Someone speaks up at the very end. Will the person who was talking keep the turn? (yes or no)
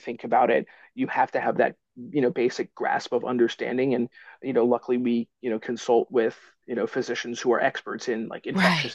yes